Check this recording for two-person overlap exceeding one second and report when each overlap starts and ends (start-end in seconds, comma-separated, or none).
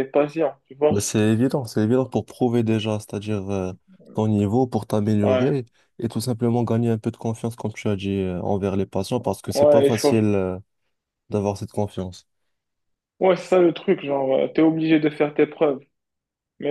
none